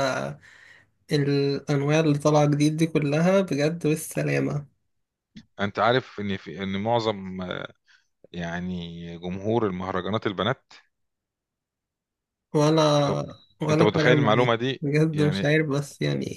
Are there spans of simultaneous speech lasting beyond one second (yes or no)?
yes